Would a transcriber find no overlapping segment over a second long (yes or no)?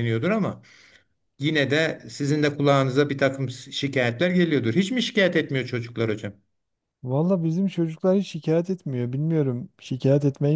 yes